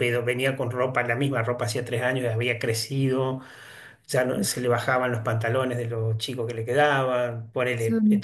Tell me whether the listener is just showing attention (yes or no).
yes